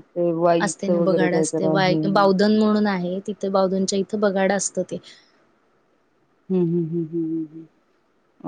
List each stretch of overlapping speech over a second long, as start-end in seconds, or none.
0.7-2.3